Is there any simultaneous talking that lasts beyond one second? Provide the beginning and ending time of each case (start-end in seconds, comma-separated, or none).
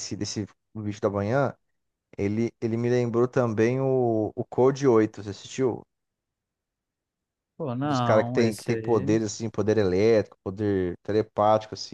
7.8-9.2